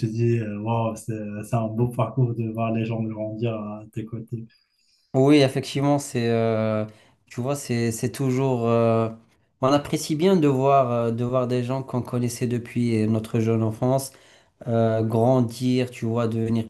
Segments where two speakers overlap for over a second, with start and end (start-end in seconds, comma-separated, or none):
none